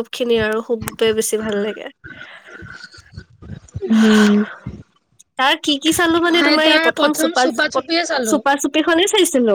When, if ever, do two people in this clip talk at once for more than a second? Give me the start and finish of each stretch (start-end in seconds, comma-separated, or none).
none